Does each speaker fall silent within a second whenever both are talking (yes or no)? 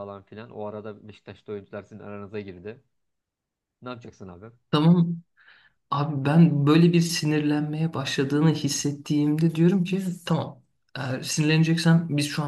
yes